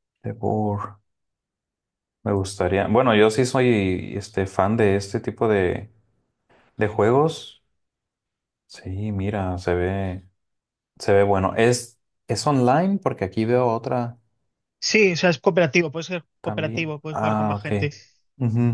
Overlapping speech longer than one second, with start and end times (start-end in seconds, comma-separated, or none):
16.4-17.9